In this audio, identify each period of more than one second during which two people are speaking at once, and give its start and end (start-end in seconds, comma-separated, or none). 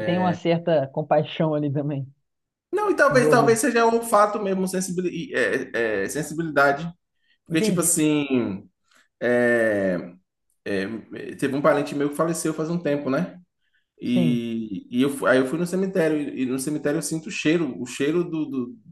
none